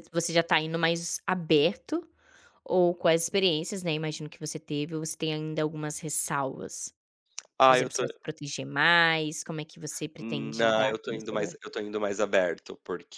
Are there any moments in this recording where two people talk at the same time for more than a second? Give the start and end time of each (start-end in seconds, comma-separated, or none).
10.2-11.5